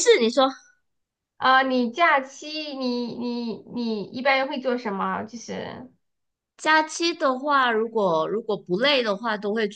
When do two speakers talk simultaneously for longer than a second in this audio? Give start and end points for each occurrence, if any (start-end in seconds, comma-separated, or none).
none